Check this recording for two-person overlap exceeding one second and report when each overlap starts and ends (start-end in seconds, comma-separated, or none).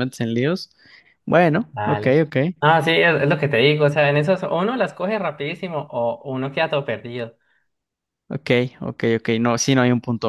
none